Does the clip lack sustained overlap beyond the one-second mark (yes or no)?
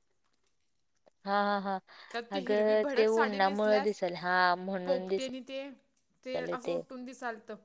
no